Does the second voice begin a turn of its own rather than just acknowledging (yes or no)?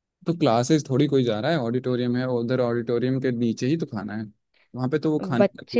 yes